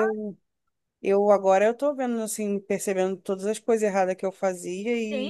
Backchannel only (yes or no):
no